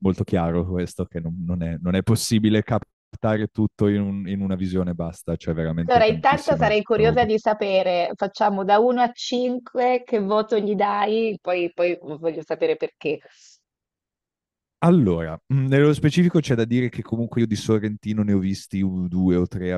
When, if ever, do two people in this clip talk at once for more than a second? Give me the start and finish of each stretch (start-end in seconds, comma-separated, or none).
5.9-7.3